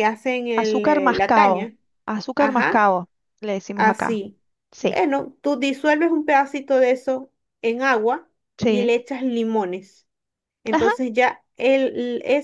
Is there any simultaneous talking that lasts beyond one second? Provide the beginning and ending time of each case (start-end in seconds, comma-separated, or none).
0.5-1.7